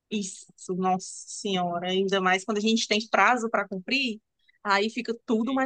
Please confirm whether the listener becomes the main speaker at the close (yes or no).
no